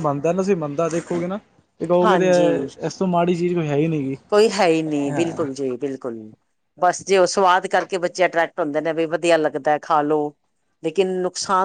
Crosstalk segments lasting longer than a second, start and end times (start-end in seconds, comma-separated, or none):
none